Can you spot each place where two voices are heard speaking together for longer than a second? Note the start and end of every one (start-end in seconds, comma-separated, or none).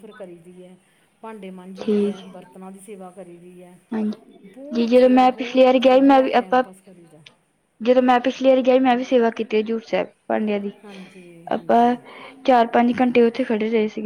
4.5-6.6